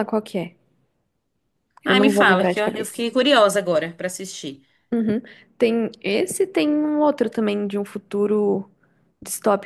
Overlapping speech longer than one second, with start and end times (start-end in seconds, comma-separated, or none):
1.8-3.1